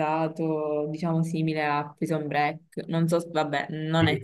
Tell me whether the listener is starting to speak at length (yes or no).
no